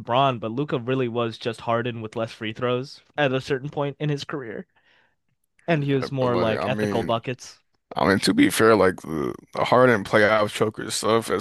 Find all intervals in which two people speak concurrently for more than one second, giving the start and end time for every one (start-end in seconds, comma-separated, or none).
5.7-7.2